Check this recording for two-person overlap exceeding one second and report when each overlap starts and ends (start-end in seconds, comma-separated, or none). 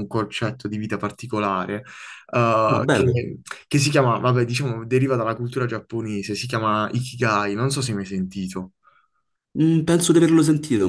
none